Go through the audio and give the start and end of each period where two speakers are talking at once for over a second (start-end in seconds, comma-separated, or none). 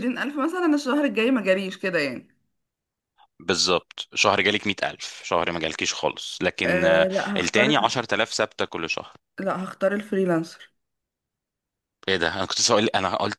6.6-8.0